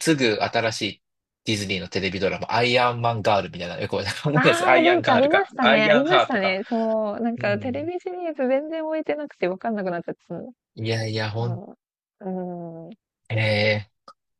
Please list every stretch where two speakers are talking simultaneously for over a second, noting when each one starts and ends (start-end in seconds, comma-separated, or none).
4.3-6.6